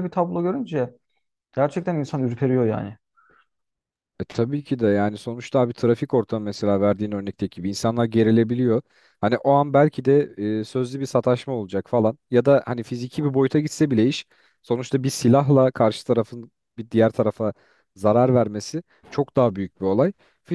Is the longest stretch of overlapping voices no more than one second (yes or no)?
yes